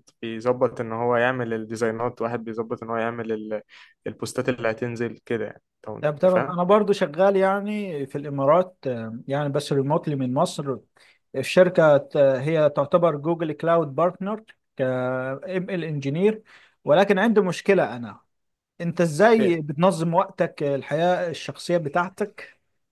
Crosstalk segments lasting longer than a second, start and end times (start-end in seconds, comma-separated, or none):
none